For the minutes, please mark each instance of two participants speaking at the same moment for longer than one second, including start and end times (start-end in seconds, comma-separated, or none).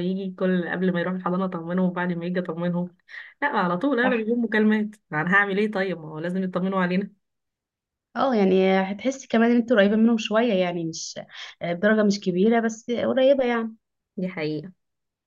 none